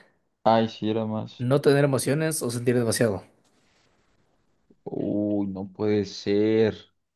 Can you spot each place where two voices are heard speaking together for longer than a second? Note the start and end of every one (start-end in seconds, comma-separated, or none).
none